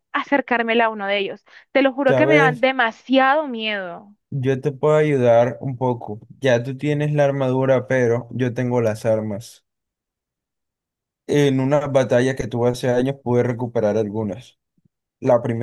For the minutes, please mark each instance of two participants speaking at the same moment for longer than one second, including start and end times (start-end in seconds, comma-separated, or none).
none